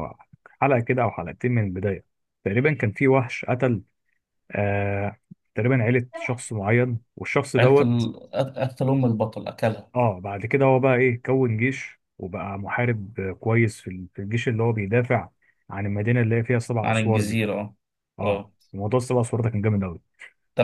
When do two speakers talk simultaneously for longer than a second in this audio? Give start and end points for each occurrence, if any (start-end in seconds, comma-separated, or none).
none